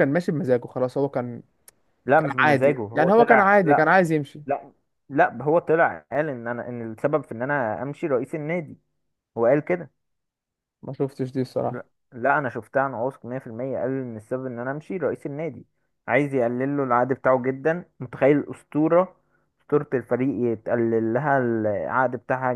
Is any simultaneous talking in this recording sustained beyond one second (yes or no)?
yes